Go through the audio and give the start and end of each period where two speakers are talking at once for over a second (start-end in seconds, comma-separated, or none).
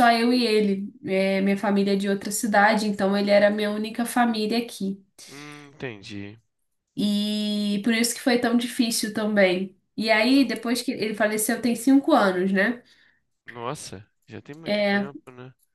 none